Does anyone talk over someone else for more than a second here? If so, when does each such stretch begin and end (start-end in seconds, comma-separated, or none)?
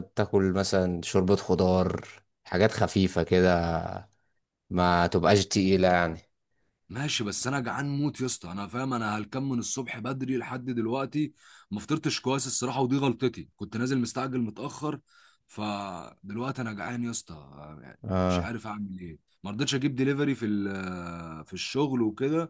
none